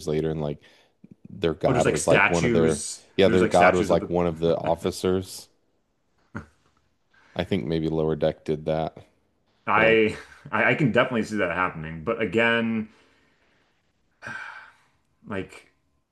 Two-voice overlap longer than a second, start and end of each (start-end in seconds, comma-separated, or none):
1.7-4.1